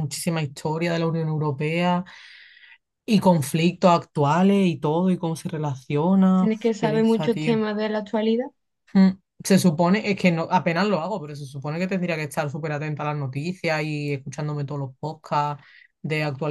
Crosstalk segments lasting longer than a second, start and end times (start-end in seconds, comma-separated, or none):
6.3-7.6